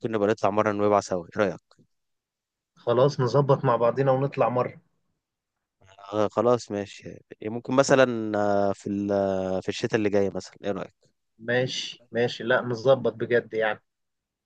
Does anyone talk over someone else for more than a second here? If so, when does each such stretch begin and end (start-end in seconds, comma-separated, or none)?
none